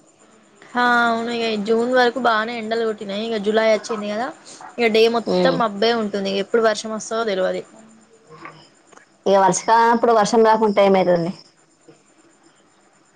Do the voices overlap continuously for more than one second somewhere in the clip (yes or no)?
no